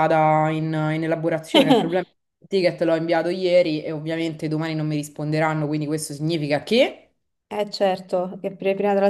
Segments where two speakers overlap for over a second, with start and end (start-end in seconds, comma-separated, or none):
none